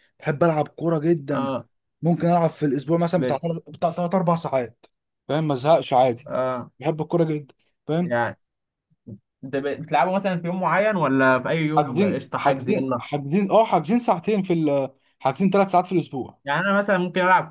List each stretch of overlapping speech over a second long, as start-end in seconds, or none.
11.8-13.0